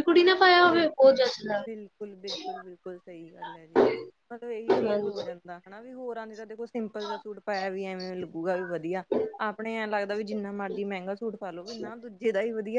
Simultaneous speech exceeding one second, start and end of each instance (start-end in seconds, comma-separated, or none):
none